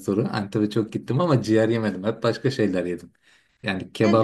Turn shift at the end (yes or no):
no